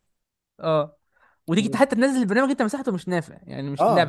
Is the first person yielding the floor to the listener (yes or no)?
yes